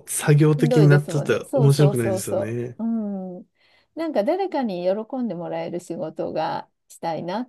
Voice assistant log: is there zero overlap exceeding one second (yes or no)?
no